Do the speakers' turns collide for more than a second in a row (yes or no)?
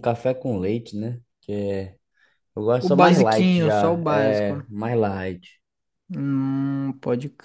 yes